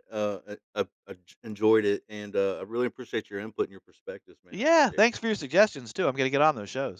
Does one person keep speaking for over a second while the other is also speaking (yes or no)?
no